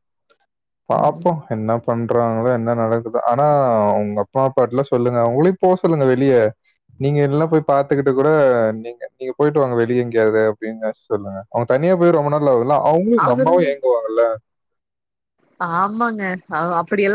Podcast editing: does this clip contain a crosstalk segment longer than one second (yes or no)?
no